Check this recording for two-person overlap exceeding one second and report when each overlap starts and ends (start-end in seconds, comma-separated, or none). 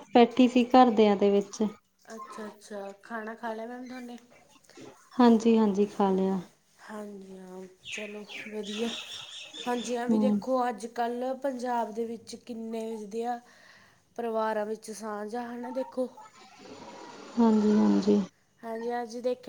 none